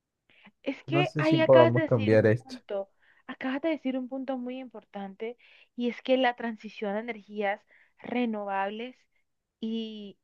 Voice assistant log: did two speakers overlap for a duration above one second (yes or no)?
yes